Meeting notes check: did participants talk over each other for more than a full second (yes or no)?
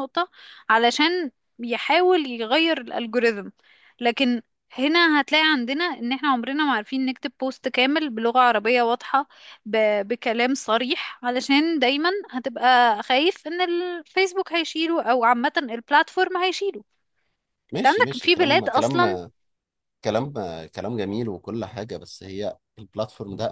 yes